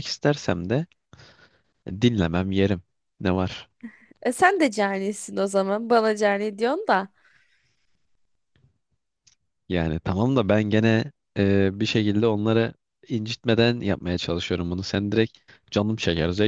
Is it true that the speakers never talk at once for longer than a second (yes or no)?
yes